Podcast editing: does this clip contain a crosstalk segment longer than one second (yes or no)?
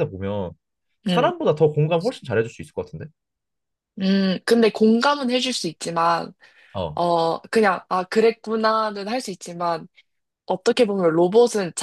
no